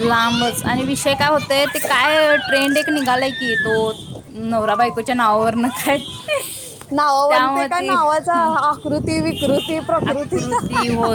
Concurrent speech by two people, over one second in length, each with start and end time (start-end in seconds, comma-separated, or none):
none